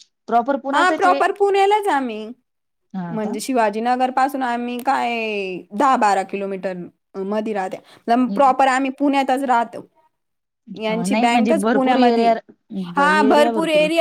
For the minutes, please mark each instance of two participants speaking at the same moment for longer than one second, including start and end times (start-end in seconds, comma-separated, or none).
11.1-12.3